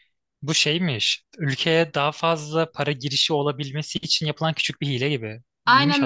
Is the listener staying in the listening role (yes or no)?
no